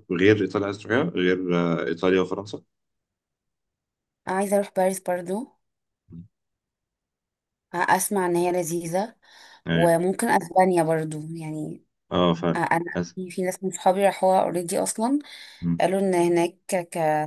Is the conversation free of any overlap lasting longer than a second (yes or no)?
yes